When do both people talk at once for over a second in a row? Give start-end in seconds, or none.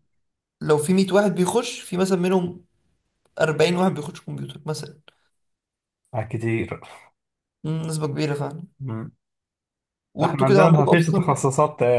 10.2-11.5